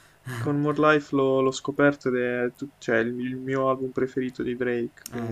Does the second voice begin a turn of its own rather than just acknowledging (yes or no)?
yes